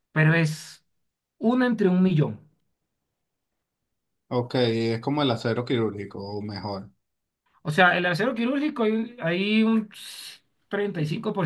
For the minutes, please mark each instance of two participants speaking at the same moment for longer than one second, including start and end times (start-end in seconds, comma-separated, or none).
none